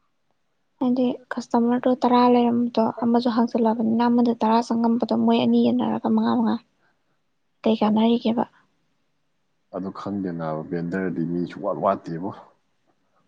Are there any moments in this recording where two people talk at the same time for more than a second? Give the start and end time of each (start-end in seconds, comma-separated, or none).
none